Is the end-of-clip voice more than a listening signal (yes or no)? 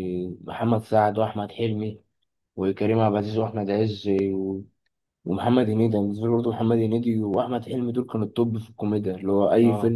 no